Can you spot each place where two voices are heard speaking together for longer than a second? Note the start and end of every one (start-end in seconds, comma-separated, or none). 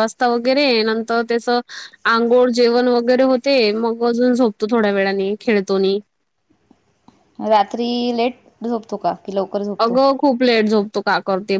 none